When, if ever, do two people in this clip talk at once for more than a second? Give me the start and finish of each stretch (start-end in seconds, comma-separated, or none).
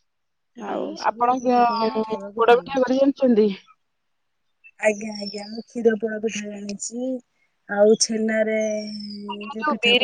0.8-2.8